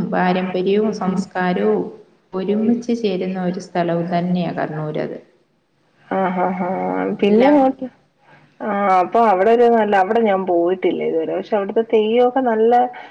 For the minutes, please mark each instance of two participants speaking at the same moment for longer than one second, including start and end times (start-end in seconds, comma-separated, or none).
none